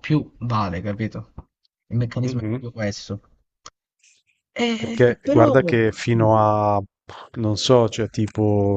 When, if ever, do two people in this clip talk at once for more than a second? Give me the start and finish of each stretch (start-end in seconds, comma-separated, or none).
4.8-6.3